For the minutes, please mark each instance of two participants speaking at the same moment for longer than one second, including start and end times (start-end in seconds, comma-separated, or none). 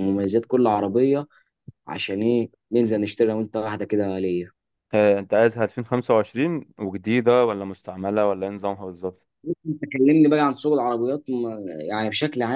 none